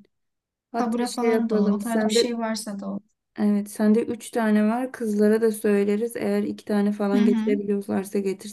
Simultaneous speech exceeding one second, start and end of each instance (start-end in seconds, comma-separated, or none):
0.8-2.3